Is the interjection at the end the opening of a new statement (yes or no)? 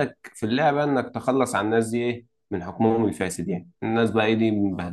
no